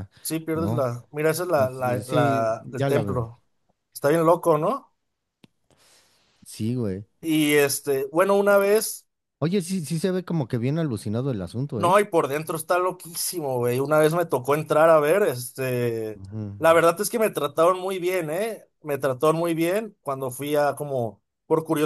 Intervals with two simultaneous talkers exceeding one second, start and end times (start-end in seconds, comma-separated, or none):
1.6-3.3